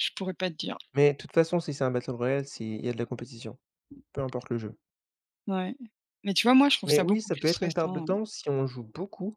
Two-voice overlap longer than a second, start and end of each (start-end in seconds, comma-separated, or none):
6.8-8.1